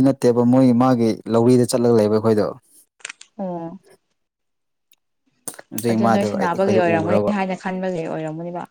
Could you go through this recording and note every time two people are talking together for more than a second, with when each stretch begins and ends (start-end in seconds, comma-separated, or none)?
5.9-7.3